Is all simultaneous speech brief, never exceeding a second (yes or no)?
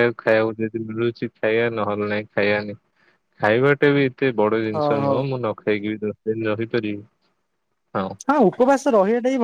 yes